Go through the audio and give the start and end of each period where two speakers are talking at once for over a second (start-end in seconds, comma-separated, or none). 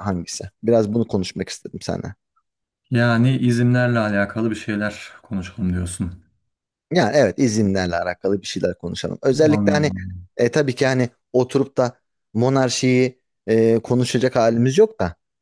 none